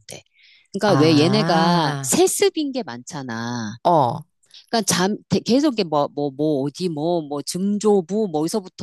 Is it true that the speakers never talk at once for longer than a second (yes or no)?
no